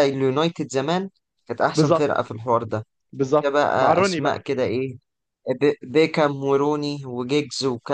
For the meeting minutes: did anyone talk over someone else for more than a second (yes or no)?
yes